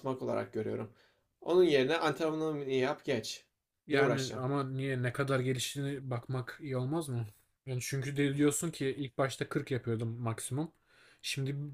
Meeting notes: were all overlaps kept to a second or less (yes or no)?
yes